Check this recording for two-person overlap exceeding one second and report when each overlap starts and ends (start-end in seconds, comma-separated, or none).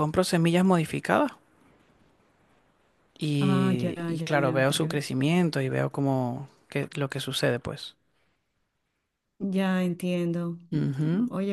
3.4-5.0